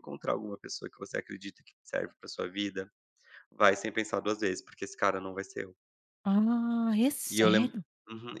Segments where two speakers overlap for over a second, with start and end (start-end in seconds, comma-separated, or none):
none